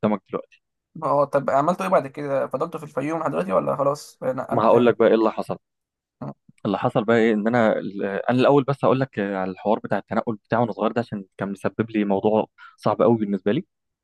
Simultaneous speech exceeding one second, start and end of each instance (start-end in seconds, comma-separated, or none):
none